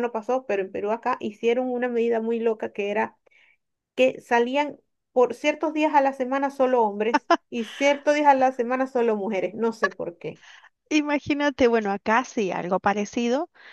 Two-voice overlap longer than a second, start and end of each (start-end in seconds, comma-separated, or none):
none